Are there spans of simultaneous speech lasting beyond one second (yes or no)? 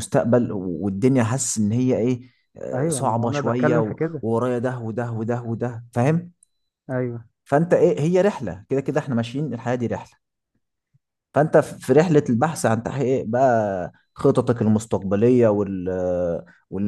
yes